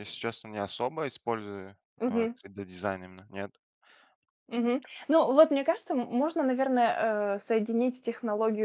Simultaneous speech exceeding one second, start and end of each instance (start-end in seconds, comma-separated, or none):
none